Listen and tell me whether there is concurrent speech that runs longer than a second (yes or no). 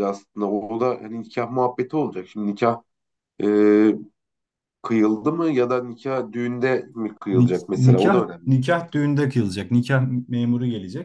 yes